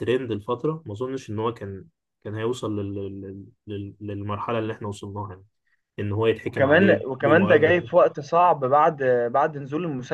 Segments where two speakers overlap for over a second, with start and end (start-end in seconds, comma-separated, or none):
6.4-7.9